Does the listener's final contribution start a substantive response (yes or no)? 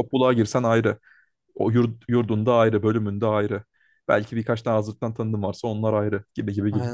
yes